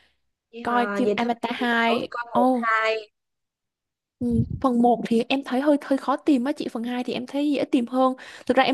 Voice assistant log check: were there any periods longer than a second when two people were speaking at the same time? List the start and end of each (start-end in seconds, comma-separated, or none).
0.6-2.7